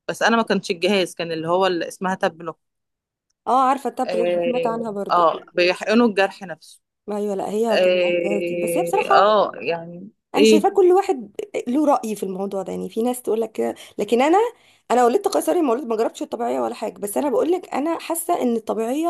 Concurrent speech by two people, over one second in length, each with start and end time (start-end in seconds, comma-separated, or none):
4.1-5.3, 7.7-9.3